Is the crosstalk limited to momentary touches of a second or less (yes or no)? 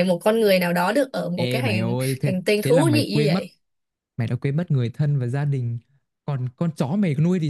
no